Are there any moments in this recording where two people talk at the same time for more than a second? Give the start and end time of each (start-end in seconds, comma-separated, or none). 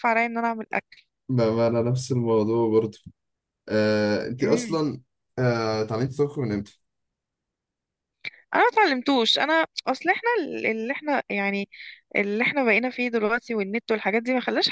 none